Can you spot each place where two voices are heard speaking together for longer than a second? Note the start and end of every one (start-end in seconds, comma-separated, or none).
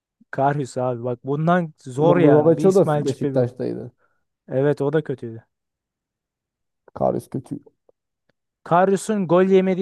2.0-3.5